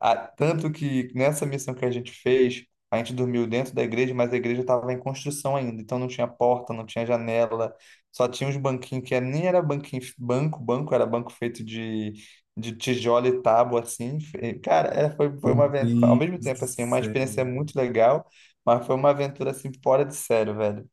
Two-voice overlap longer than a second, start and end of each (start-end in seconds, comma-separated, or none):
15.4-17.1